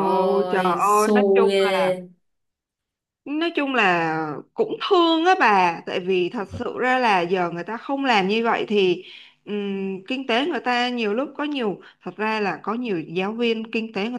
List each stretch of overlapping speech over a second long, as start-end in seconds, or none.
0.5-1.9